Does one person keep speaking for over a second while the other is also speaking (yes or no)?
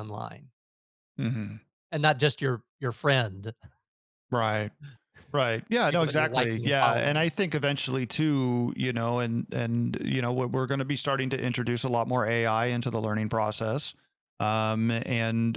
yes